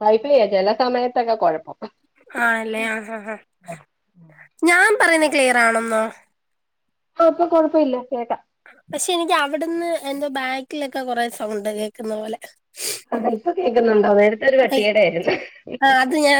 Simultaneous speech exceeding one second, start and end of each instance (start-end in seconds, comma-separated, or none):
none